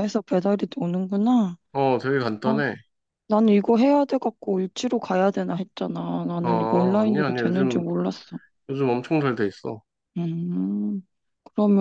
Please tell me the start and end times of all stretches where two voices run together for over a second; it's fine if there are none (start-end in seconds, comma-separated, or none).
6.4-7.8